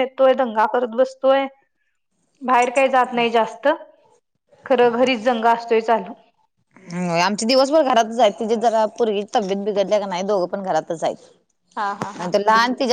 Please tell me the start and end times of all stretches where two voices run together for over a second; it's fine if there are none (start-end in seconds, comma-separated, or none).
none